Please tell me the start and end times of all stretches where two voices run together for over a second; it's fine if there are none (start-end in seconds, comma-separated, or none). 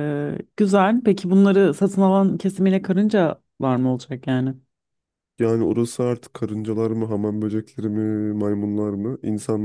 none